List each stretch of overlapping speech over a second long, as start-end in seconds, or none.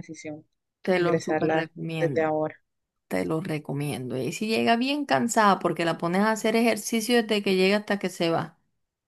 0.9-2.3